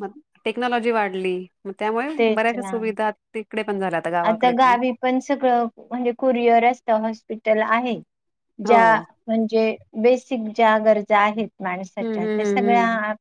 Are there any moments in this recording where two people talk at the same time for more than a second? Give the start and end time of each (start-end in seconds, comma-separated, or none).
none